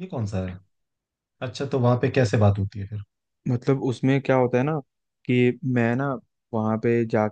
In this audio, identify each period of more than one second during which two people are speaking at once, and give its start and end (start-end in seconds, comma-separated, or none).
none